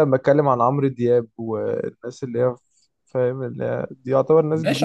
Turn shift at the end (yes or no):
yes